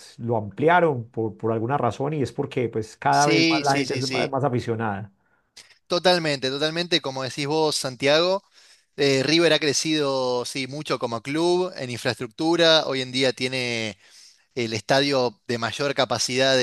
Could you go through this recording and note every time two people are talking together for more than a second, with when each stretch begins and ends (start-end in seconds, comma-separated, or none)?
3.1-4.3